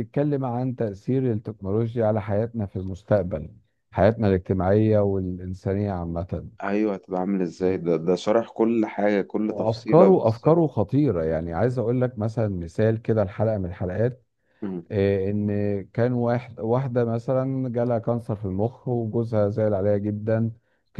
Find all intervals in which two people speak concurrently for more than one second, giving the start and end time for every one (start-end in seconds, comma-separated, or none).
9.5-10.7